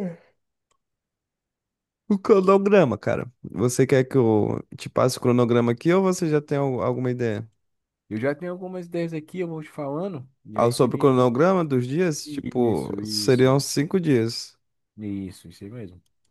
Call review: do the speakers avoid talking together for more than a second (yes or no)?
no